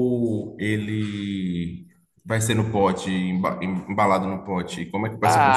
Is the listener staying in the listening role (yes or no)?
no